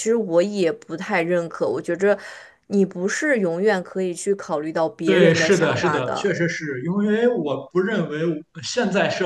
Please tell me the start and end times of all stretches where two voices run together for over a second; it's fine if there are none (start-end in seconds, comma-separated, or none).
5.0-6.3